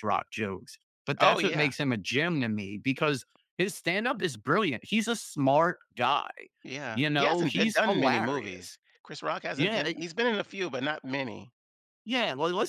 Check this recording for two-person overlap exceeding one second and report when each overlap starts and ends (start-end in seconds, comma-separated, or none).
6.9-8.8